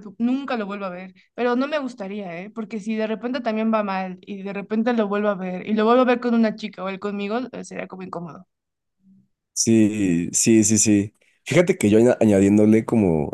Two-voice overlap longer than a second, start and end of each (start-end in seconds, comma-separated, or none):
none